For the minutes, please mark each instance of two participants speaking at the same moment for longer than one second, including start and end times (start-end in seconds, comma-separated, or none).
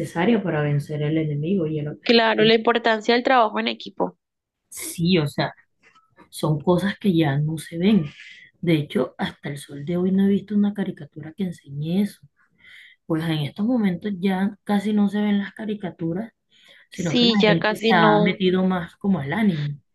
16.9-18.4